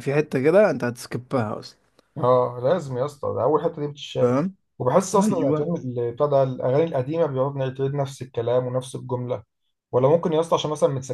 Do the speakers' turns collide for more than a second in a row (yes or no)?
no